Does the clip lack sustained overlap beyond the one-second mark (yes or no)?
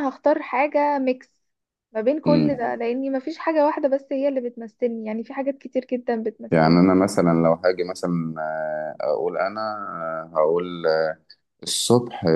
yes